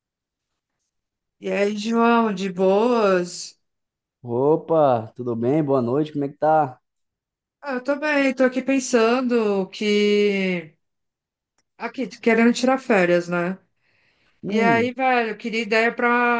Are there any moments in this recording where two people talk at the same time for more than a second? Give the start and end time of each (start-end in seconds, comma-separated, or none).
none